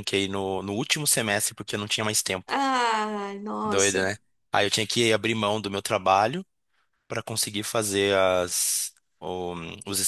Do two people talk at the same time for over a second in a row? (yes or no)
no